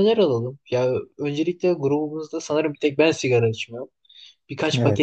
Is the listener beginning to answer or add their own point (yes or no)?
no